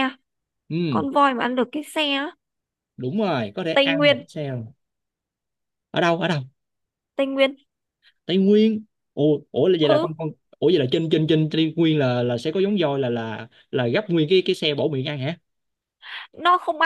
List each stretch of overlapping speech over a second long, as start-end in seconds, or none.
none